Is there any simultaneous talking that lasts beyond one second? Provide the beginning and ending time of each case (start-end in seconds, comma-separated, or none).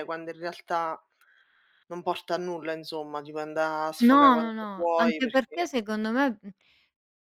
4.0-5.6